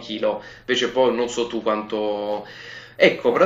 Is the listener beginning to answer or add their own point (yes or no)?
no